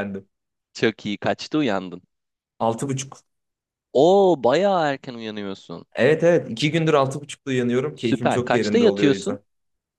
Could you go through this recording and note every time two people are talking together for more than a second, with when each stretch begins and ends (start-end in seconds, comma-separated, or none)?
7.9-9.4